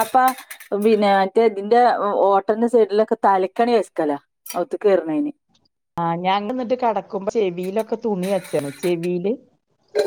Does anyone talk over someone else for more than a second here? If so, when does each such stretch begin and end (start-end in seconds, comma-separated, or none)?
none